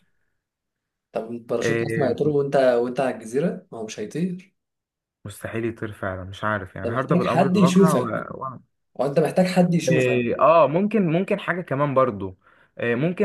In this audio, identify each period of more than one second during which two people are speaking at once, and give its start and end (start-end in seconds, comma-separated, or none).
6.8-8.1